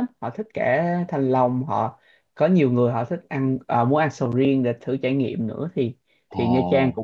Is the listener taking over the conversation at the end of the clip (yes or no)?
no